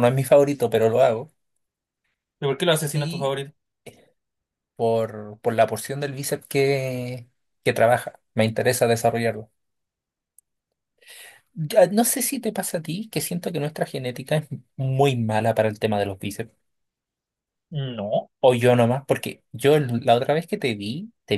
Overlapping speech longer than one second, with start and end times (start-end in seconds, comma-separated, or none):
none